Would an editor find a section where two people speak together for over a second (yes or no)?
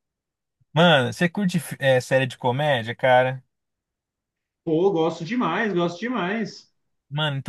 no